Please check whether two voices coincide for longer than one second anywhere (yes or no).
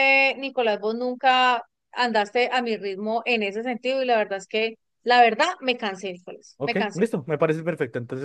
no